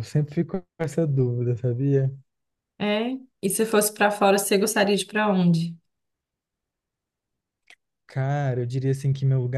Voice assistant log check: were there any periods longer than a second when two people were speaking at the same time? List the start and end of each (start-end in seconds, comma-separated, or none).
none